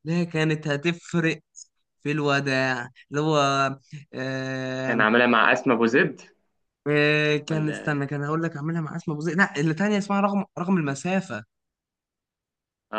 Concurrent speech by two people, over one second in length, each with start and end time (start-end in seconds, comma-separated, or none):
none